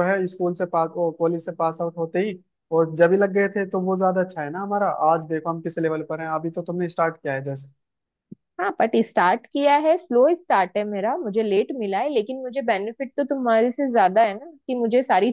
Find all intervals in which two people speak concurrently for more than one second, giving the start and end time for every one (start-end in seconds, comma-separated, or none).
none